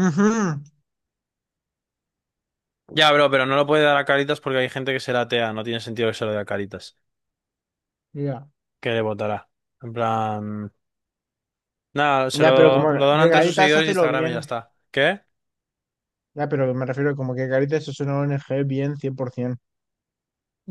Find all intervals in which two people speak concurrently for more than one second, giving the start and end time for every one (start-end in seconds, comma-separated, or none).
12.3-14.5